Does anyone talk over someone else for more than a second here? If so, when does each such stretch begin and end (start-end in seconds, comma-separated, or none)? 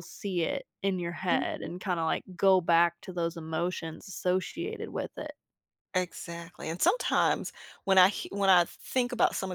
none